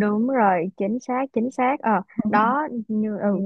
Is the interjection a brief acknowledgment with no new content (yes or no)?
yes